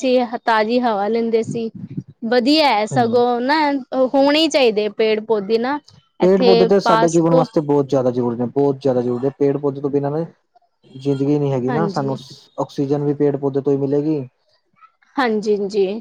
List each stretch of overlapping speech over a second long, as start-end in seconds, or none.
none